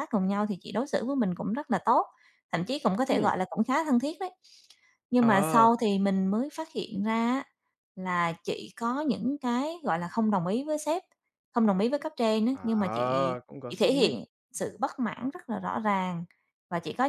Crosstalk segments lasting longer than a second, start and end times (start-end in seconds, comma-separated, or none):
12.5-14.1